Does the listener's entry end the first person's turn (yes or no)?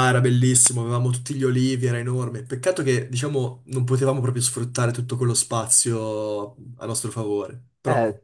yes